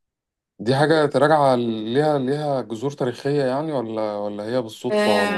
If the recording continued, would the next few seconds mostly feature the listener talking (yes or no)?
yes